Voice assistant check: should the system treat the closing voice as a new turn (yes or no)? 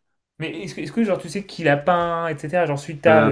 yes